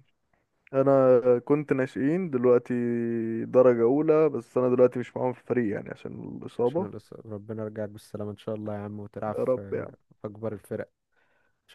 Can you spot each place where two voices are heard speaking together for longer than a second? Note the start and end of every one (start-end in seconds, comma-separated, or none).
none